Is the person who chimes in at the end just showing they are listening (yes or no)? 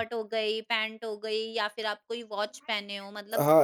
no